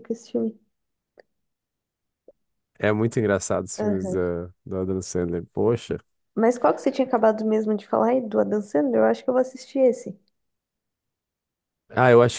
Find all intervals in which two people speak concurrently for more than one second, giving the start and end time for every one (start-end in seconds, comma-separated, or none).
none